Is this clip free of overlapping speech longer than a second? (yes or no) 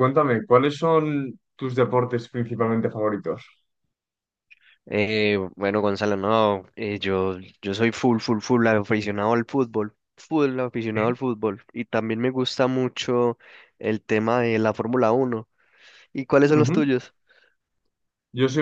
yes